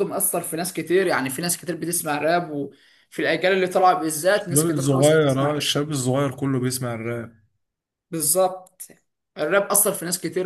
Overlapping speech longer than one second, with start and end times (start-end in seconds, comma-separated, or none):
4.3-5.7